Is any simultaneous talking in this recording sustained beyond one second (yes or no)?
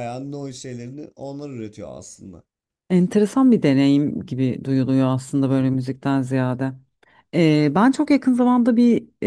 no